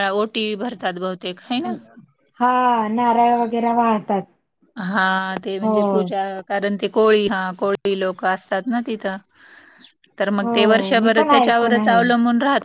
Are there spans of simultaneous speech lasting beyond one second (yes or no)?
yes